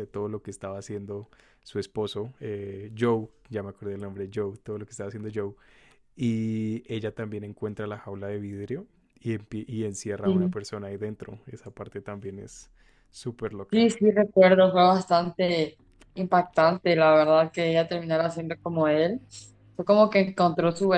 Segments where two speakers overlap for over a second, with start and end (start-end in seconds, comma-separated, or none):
none